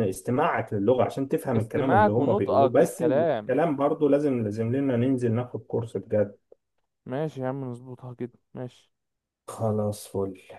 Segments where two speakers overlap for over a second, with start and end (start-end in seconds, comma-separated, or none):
1.6-3.5